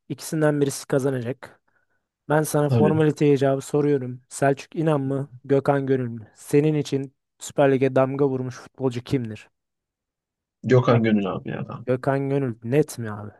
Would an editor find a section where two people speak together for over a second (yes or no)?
no